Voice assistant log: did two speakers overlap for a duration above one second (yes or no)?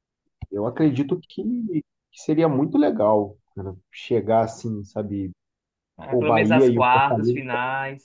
yes